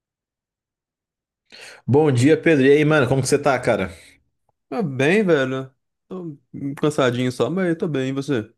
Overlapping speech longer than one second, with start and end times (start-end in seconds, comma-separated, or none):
none